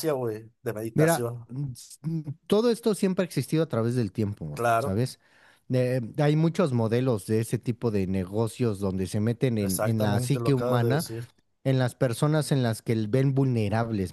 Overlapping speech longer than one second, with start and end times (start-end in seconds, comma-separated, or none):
9.6-11.1